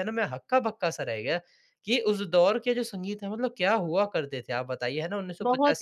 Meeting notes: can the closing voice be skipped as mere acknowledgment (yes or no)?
no